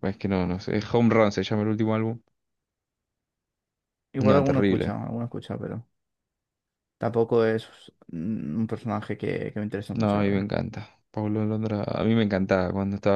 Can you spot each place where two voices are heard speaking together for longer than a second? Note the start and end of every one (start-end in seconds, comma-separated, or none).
none